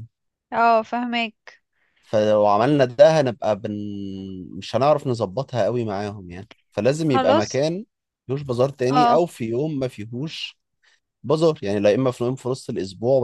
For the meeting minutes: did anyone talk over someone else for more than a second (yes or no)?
no